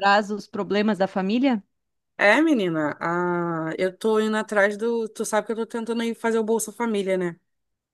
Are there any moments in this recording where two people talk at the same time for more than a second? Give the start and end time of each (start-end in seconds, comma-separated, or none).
none